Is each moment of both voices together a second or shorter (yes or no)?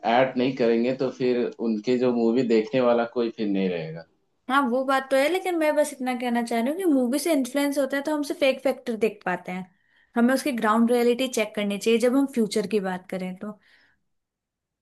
yes